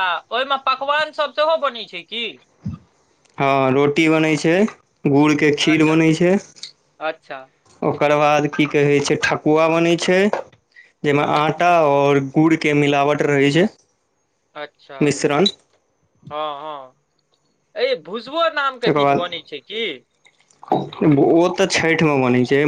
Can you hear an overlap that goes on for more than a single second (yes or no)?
no